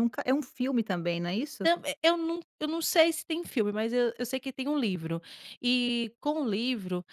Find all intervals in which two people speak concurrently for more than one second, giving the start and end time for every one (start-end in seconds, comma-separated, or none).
none